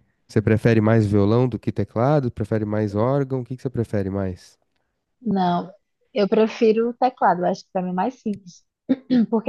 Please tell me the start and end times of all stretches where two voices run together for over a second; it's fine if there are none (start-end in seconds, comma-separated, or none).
none